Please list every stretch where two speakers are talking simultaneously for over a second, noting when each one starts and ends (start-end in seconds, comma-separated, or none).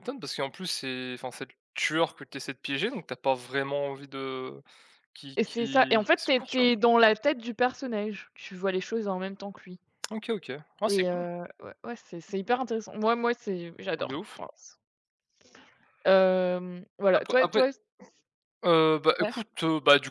5.3-6.7